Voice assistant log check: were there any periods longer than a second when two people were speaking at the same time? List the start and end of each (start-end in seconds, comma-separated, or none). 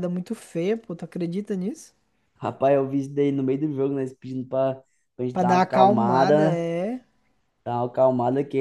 5.3-6.6